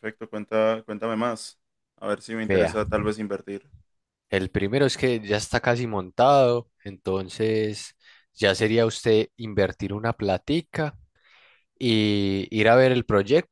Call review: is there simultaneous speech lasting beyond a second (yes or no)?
no